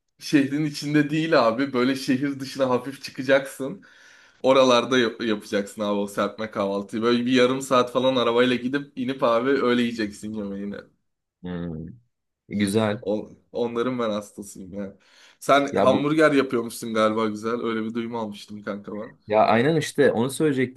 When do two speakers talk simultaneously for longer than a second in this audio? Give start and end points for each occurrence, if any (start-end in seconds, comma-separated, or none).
none